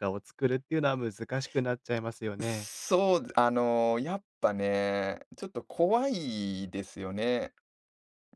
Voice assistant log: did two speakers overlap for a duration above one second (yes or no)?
no